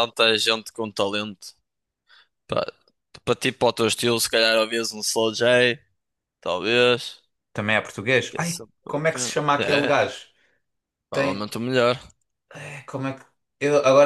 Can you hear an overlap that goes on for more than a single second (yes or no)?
yes